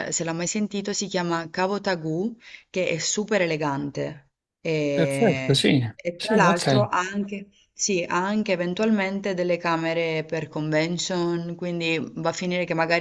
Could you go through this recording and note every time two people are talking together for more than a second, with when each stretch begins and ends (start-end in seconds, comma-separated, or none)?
5.0-6.9